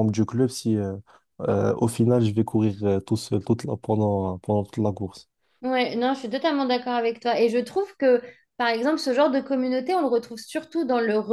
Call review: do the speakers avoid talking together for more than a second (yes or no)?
yes